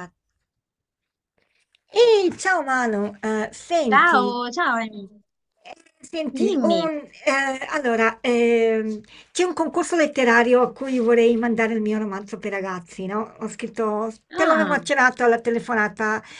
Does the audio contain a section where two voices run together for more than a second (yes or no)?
no